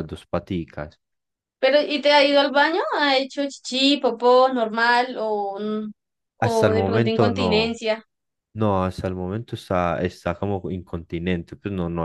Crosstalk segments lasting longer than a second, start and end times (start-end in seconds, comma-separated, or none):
6.4-7.8